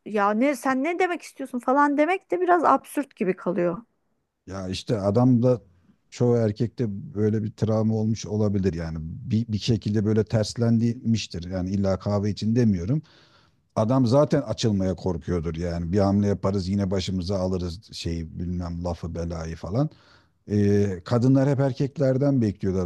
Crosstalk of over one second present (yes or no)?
no